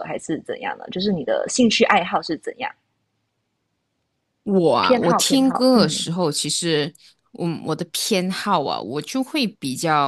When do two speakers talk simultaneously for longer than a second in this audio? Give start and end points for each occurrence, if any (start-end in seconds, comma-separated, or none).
4.8-6.1